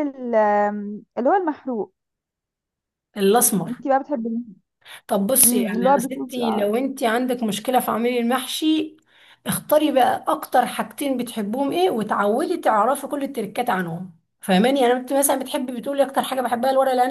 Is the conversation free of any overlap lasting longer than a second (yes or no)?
no